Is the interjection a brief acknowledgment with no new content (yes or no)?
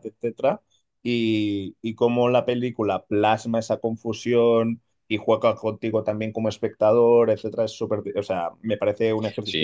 no